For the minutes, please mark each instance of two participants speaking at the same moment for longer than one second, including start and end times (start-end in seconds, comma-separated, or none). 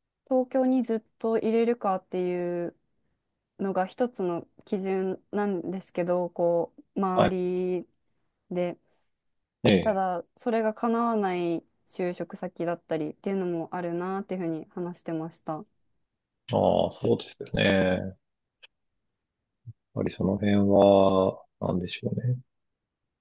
none